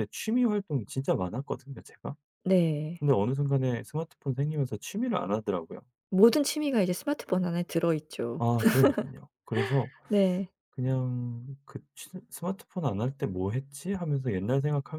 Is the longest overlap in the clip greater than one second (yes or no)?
no